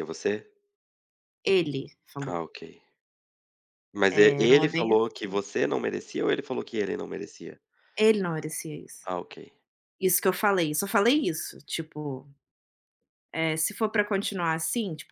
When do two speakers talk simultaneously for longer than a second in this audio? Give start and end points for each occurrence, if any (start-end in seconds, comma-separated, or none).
4.1-5.4